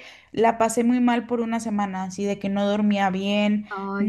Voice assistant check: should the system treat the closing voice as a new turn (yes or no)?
no